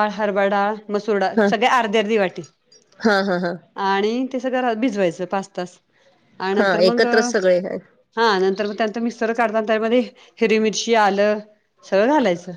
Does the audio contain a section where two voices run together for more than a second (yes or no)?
no